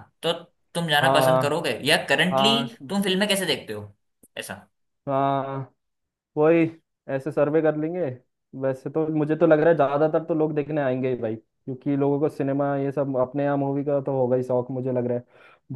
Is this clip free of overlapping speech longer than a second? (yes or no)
yes